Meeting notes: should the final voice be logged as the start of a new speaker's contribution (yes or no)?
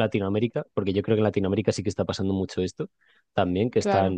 no